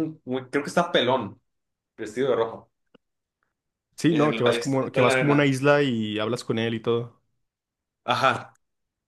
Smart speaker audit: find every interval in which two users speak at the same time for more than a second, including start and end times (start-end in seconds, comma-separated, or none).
4.1-5.5